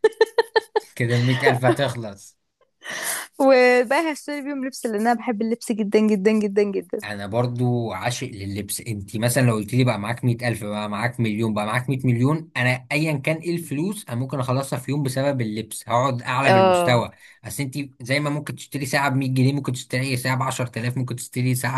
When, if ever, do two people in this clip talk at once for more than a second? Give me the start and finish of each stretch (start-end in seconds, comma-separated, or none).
none